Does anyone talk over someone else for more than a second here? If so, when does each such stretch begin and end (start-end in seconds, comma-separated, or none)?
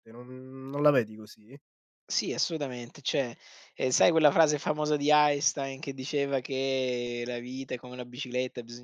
none